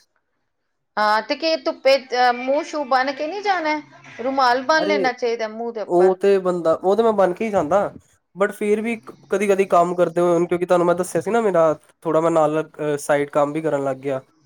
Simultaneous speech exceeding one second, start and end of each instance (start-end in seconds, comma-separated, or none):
none